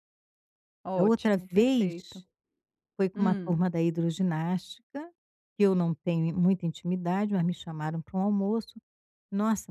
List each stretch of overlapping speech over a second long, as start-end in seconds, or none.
1.0-2.2